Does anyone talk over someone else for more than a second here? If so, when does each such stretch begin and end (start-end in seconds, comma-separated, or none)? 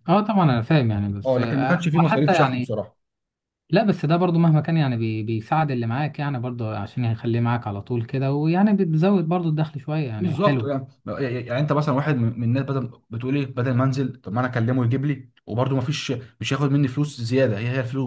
1.2-2.7